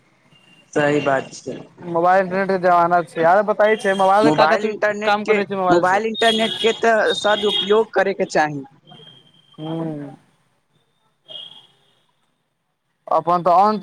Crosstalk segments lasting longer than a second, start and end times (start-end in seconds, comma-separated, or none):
none